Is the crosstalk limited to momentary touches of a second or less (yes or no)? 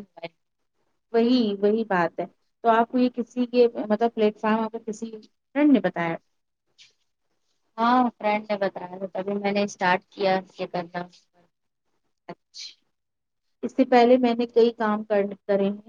yes